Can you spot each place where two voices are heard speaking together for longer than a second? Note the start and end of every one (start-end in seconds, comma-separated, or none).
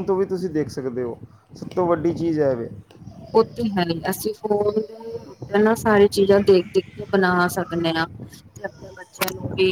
none